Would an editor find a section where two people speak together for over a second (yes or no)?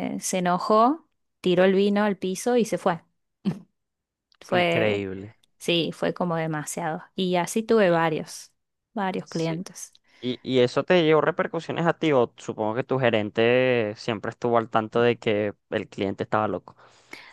no